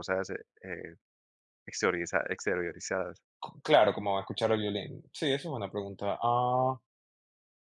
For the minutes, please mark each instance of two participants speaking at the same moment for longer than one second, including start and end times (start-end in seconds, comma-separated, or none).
none